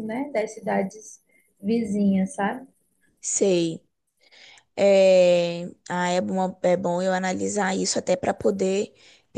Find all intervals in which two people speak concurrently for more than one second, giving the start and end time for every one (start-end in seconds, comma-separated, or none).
none